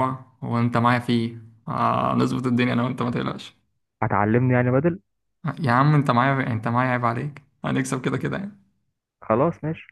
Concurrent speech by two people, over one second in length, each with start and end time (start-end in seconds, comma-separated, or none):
none